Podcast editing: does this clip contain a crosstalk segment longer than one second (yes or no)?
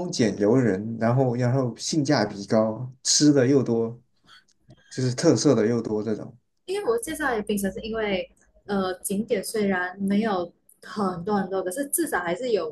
no